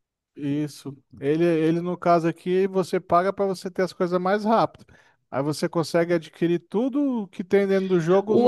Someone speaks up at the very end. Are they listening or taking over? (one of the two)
taking over